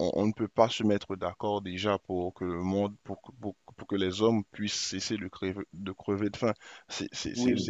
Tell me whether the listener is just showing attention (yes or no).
yes